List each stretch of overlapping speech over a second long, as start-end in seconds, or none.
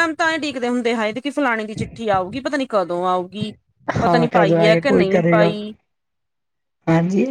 4.0-5.5